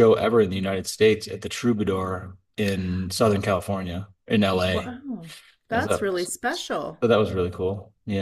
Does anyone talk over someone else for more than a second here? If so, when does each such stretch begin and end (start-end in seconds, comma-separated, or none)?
5.7-7.0